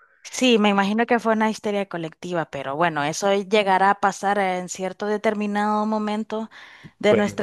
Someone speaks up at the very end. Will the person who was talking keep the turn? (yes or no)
yes